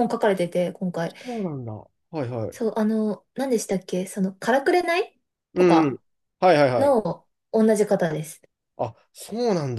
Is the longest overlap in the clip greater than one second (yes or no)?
no